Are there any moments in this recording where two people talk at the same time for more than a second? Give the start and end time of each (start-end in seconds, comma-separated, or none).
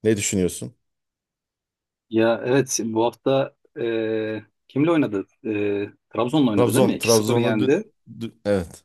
6.5-7.7